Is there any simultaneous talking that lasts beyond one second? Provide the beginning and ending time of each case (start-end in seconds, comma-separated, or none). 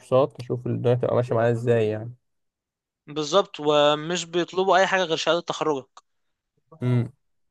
none